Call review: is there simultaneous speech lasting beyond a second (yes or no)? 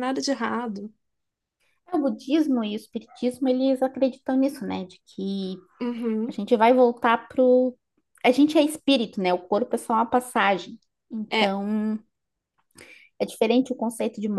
no